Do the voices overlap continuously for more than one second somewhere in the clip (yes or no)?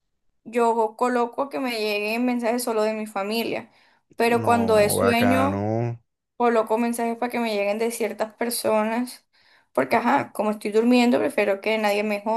yes